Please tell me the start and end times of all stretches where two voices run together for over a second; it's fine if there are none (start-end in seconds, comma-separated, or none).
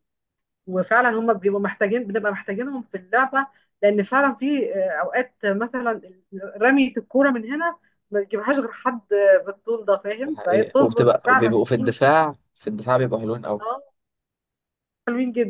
10.3-11.6